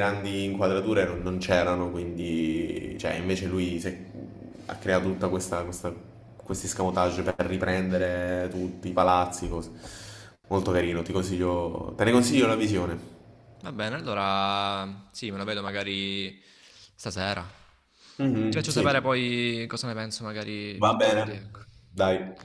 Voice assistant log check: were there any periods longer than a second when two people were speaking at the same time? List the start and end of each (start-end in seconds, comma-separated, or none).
none